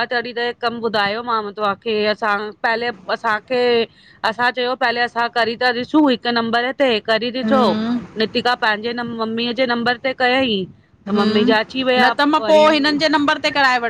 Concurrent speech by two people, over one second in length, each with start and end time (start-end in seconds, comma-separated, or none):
none